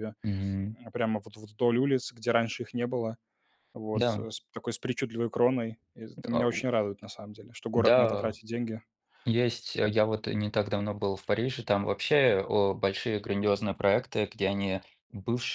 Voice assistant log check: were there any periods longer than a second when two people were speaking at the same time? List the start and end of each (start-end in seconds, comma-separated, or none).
none